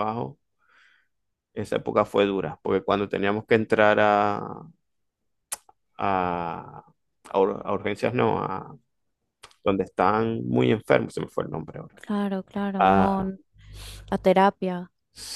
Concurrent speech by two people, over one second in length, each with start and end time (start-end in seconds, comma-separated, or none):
none